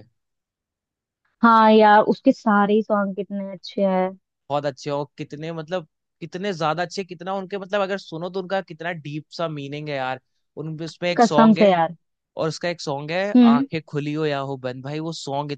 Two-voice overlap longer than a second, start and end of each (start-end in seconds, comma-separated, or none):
none